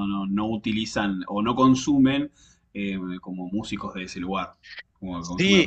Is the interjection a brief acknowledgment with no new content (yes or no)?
no